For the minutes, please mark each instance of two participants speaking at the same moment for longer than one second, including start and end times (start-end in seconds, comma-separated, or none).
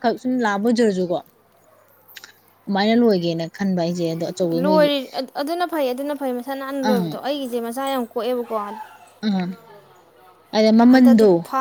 none